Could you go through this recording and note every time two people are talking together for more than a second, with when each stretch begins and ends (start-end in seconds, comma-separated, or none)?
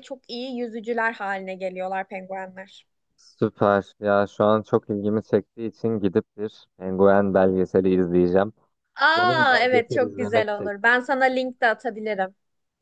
9.2-10.9